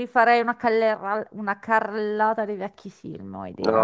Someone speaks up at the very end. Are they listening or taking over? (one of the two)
taking over